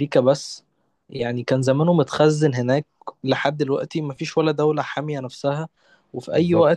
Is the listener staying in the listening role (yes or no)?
yes